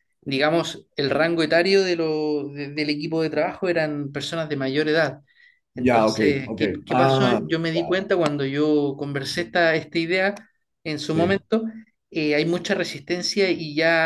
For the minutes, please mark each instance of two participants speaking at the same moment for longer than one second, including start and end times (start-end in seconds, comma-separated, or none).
5.8-8.1